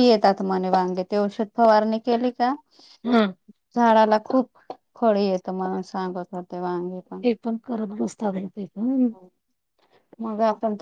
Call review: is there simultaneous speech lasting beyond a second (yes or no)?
no